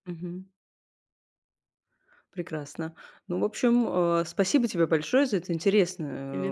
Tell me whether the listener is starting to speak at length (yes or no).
no